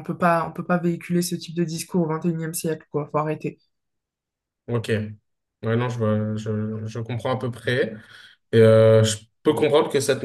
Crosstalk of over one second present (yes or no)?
no